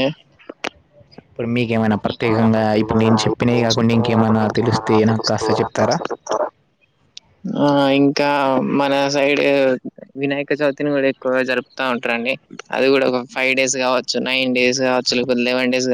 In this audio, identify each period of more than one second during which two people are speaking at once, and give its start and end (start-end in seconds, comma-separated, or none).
2.1-6.0